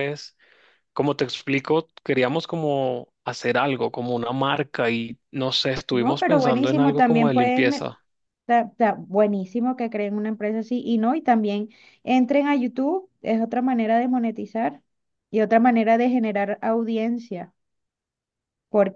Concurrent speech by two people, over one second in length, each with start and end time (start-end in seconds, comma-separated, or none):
5.9-7.9